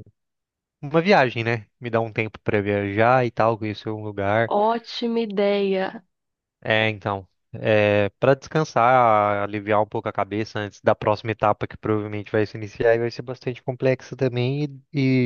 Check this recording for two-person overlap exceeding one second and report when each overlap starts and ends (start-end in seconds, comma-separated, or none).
none